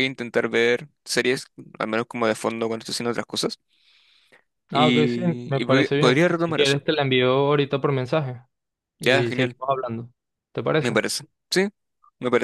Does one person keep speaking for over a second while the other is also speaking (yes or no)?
yes